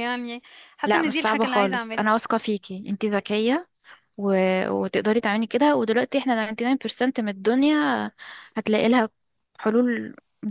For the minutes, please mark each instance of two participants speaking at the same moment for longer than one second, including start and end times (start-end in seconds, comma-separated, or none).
0.8-2.2